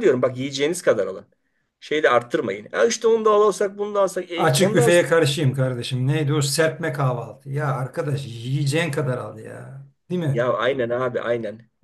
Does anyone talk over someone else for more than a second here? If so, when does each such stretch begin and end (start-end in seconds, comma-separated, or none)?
none